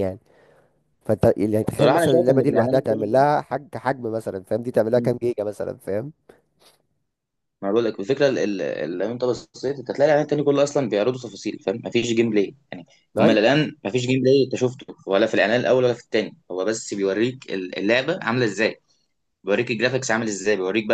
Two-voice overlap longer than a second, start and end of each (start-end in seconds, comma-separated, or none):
1.8-3.0